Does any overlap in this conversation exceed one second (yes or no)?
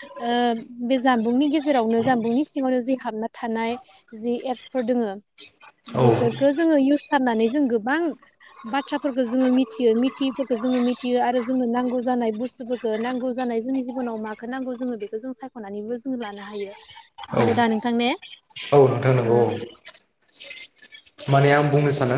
no